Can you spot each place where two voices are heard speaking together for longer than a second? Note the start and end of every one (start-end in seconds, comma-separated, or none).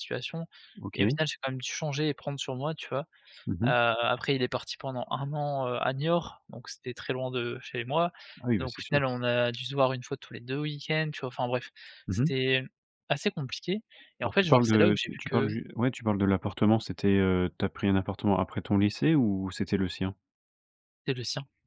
14.2-15.6